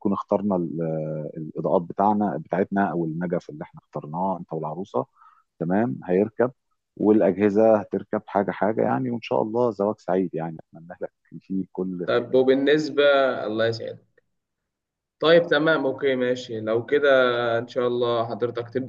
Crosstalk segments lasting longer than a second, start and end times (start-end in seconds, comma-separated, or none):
none